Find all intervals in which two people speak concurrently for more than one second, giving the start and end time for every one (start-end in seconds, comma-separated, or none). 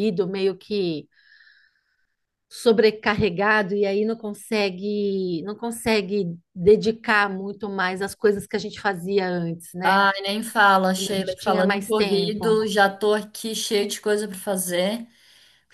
10.9-12.6